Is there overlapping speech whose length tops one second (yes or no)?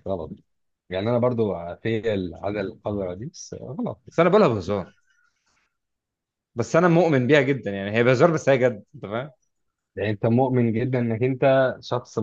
no